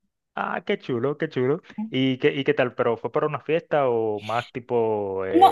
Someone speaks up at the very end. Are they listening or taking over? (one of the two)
taking over